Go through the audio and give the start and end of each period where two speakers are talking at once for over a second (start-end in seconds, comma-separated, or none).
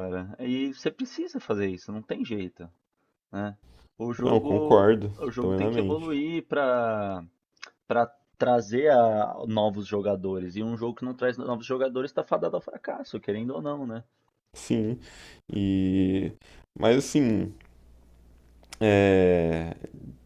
4.2-6.2